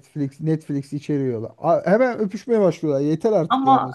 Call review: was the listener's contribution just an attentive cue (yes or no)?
no